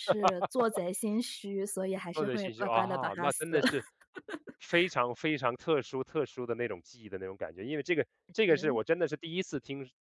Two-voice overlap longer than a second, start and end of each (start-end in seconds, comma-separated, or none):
2.1-3.6